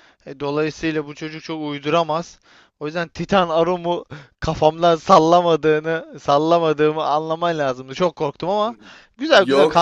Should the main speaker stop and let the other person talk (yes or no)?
yes